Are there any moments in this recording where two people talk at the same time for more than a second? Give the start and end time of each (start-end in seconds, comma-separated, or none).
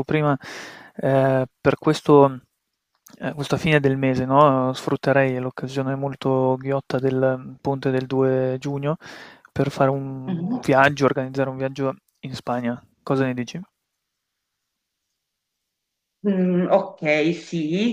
none